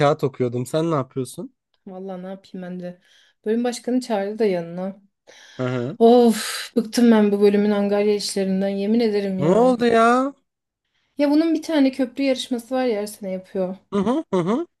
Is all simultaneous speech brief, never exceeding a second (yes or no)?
yes